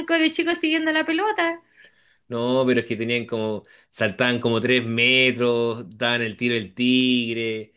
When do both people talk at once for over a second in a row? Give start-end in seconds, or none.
none